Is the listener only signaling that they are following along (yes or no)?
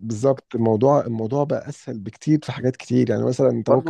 no